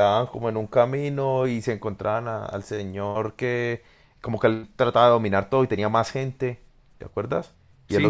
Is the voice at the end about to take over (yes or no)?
no